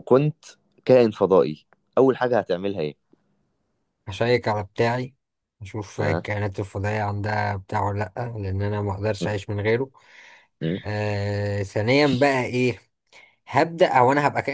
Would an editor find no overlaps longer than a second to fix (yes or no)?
yes